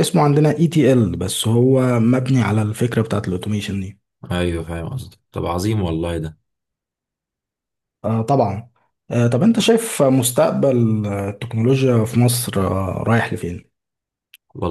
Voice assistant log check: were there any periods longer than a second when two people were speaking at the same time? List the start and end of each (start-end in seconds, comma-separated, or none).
none